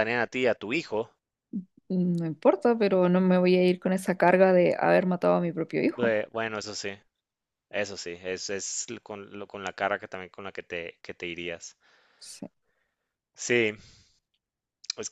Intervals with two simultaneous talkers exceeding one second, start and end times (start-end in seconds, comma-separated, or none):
none